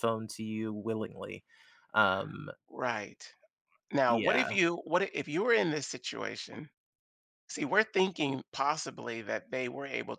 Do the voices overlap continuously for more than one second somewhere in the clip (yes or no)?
no